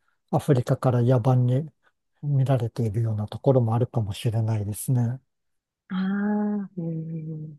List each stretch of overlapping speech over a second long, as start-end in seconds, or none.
none